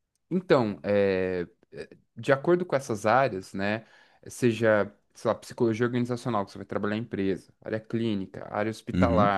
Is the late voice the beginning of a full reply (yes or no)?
no